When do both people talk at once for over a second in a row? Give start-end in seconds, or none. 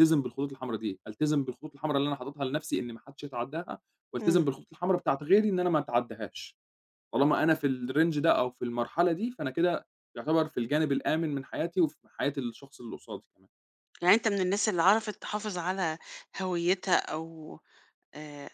none